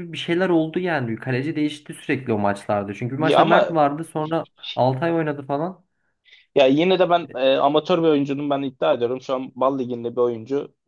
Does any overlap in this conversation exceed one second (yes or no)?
no